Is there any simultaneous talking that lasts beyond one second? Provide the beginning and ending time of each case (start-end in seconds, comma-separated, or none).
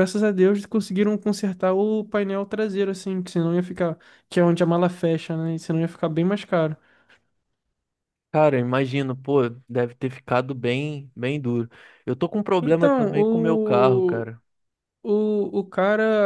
12.6-14.3